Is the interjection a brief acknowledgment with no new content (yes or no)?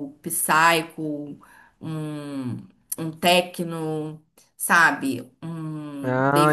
no